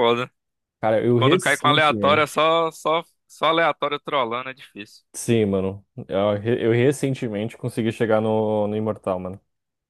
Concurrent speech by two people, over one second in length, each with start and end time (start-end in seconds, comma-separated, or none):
1.1-2.4